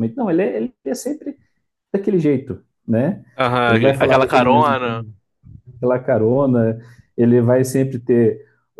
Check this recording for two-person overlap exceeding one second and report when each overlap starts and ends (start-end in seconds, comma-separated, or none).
3.6-5.0